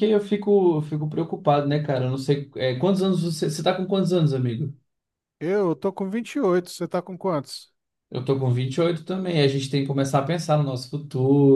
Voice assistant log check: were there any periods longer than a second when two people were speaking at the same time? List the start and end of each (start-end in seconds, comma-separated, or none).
none